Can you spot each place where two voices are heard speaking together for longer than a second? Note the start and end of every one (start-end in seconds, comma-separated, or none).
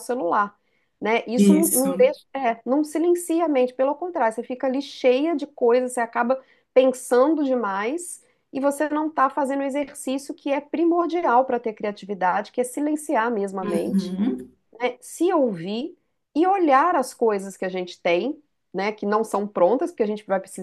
none